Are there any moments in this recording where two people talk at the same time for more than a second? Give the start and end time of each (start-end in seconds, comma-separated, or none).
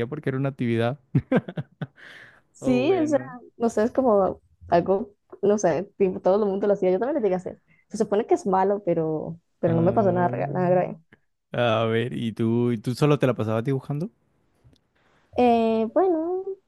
9.7-11.0